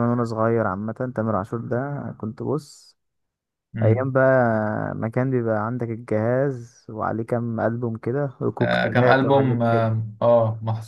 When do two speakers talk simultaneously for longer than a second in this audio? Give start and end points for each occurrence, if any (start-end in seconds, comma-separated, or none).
8.6-9.9